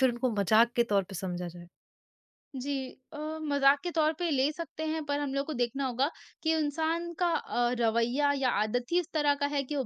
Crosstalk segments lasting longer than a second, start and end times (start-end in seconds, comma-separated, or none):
none